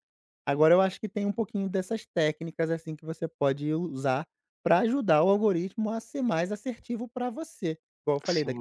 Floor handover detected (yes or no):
no